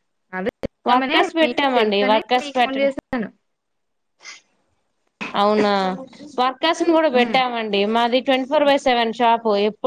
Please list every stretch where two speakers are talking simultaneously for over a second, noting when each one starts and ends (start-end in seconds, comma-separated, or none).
0.9-2.9